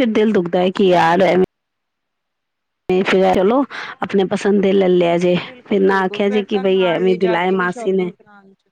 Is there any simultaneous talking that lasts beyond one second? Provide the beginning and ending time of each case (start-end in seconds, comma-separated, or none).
5.4-8.1